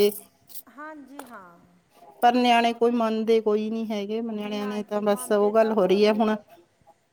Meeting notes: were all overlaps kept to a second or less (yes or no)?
no